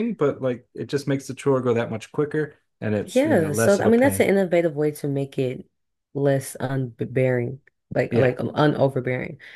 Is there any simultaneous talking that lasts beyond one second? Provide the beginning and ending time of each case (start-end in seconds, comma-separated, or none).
3.0-4.3